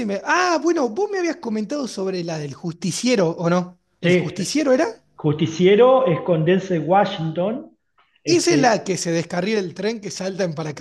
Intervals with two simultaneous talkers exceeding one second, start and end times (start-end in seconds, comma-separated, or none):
none